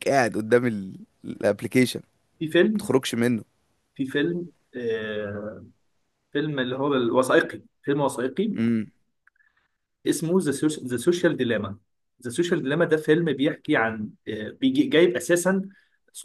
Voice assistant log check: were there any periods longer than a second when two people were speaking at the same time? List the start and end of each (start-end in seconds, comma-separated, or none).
none